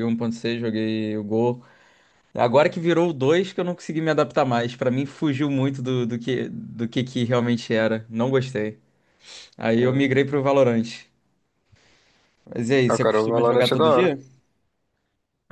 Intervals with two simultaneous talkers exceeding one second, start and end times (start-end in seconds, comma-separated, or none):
12.9-14.2